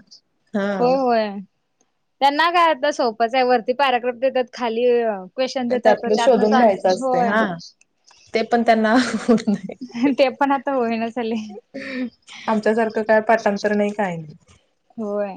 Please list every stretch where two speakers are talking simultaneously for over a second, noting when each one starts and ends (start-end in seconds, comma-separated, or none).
5.8-7.3